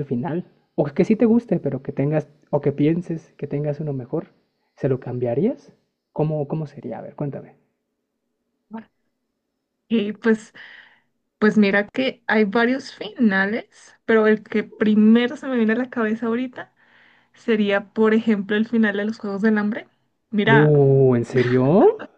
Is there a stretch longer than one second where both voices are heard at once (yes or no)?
no